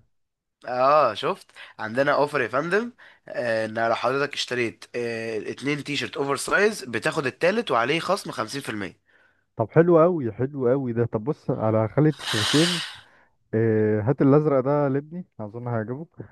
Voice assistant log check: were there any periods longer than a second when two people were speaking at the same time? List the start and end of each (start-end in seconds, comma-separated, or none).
none